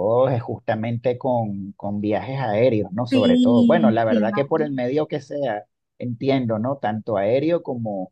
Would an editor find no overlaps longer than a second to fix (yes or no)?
no